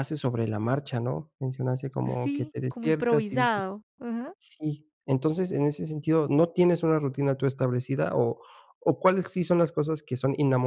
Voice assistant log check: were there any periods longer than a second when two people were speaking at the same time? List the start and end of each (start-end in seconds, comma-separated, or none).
2.0-3.7